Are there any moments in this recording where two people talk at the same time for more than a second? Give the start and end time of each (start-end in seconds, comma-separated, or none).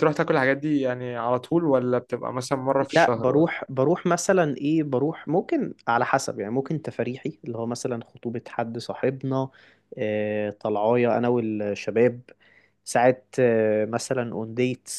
none